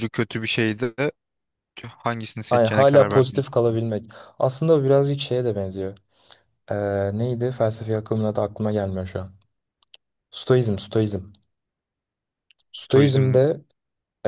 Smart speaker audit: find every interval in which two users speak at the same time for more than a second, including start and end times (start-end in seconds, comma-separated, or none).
2.5-3.8